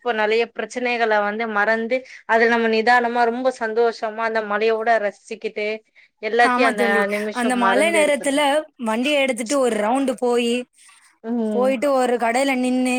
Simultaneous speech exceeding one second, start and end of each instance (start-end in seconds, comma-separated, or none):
none